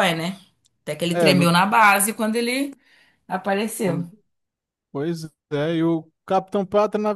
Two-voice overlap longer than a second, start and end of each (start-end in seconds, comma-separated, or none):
none